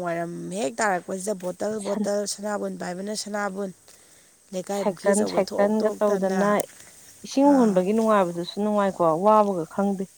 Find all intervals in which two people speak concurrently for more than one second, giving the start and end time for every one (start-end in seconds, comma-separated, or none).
4.8-6.4